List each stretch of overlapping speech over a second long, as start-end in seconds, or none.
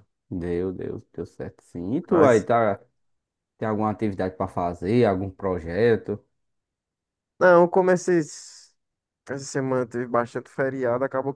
none